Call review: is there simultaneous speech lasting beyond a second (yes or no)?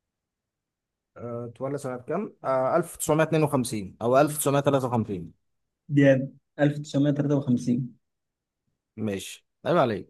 no